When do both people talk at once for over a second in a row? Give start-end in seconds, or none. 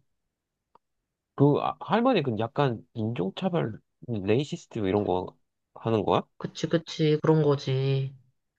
none